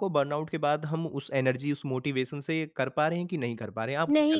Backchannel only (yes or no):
no